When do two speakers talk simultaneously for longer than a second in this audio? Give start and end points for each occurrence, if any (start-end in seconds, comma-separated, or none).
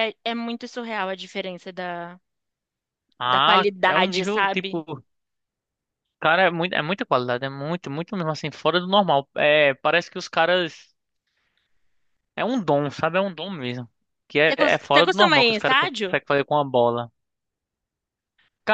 3.2-4.8, 14.5-16.2